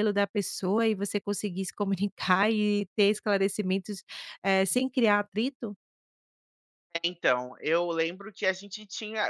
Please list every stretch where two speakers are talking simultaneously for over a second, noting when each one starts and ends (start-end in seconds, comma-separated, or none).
none